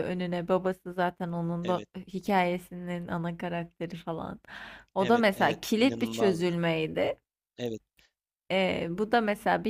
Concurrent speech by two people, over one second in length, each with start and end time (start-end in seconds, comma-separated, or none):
5.0-6.5